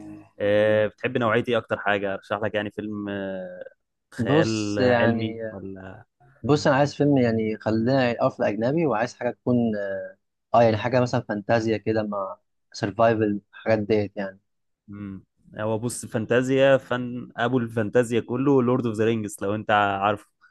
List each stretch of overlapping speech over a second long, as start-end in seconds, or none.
4.2-5.4